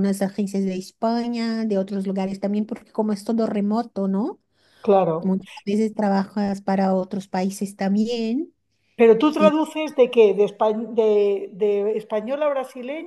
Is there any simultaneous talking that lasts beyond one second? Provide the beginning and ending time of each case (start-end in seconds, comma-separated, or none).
none